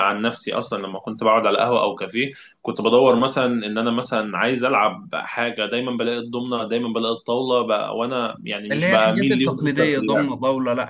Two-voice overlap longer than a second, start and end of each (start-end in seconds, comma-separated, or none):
8.7-10.3